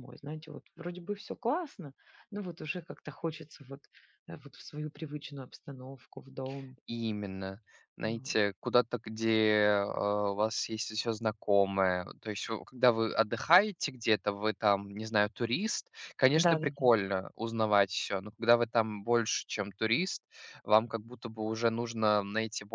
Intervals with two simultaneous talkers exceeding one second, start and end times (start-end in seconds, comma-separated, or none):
none